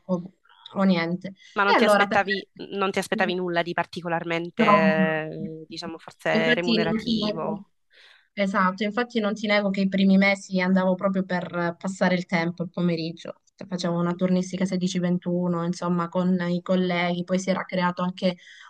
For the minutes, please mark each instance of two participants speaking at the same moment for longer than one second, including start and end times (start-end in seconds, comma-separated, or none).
6.3-7.6